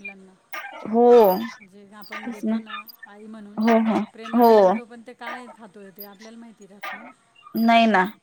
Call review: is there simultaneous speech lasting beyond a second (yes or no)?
no